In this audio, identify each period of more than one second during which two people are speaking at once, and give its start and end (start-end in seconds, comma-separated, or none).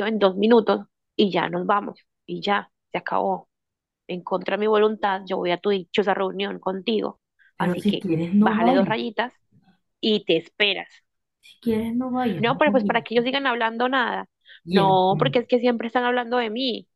7.6-9.0